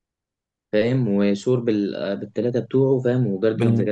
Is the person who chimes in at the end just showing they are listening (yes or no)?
no